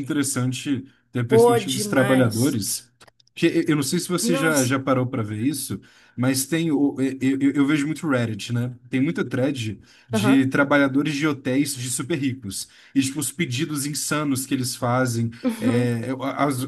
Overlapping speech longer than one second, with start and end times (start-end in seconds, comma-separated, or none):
1.3-2.6